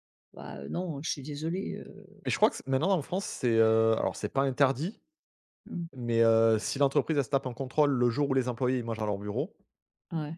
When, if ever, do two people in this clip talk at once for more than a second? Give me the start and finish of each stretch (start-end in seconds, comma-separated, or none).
none